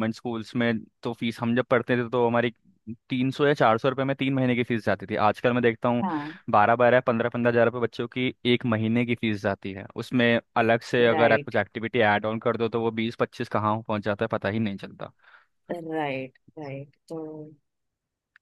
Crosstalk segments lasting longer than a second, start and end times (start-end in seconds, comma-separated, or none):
none